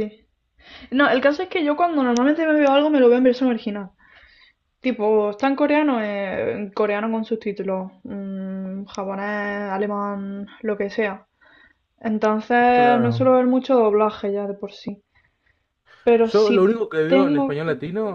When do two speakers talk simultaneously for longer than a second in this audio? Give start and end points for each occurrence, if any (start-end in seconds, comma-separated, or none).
16.2-17.6